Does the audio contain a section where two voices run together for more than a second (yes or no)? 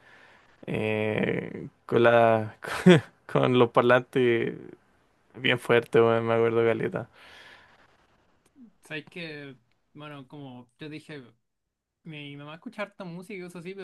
no